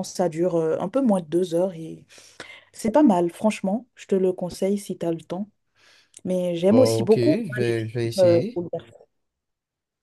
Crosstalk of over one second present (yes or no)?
yes